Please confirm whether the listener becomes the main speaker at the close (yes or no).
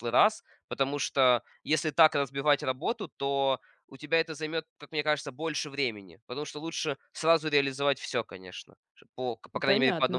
yes